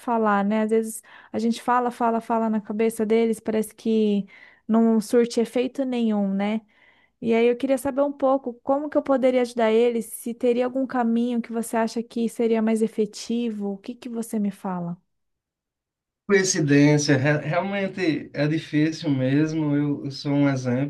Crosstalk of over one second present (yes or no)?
no